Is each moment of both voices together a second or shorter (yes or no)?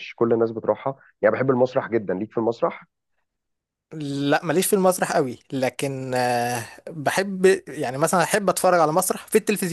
yes